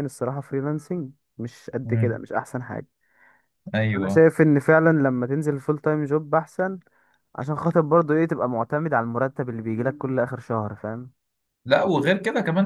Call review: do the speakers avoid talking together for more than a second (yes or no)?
yes